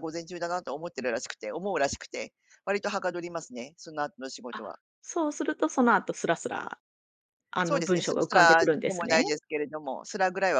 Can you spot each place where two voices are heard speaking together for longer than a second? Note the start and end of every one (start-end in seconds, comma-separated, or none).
7.6-9.2